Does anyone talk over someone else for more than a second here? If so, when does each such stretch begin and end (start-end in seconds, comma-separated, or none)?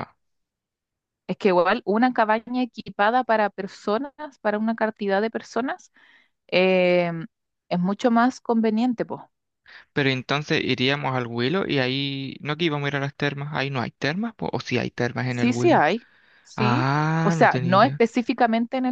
16.6-18.0